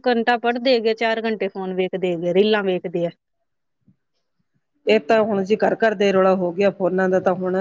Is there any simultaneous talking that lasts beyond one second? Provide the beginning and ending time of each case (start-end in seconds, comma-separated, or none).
none